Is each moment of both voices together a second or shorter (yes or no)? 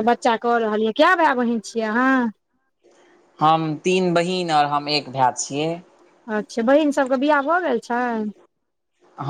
yes